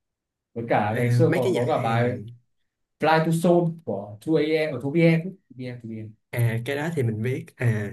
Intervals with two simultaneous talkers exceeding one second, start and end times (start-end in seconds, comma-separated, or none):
0.9-2.2